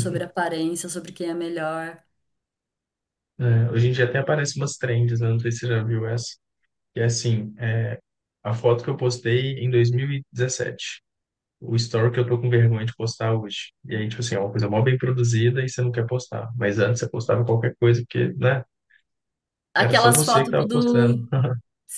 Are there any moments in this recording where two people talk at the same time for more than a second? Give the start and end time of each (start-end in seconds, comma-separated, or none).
19.8-21.2